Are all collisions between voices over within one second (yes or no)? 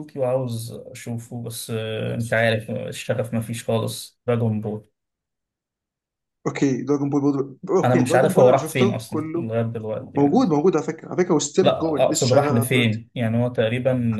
no